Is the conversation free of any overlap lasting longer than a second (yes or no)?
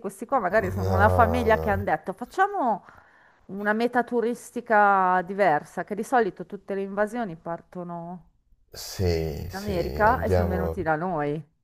no